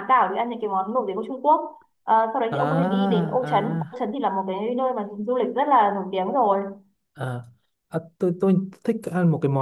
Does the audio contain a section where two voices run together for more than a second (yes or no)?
yes